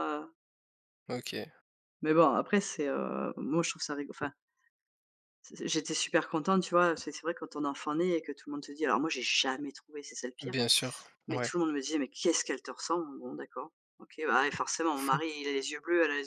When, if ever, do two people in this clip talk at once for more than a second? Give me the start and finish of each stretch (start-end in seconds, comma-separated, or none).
none